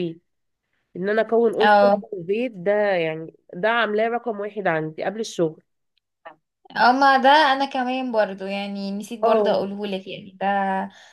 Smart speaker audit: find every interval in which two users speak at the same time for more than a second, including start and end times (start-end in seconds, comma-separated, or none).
none